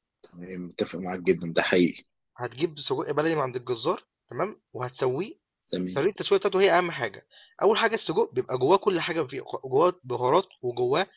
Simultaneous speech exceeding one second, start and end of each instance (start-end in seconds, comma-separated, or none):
none